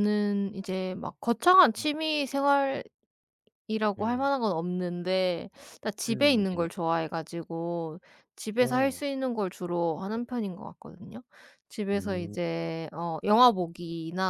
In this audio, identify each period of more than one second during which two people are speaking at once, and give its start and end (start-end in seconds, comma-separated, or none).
none